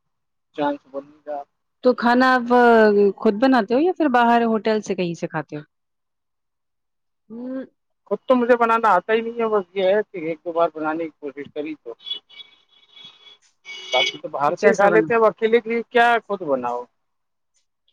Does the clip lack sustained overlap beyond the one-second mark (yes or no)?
yes